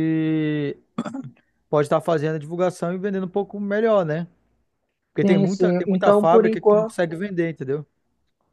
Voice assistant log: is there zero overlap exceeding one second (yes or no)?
no